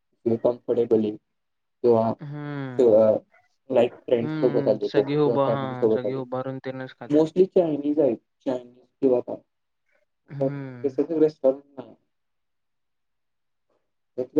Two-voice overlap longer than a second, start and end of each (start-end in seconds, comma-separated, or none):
4.2-6.2